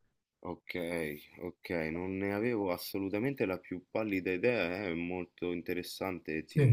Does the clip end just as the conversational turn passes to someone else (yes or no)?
no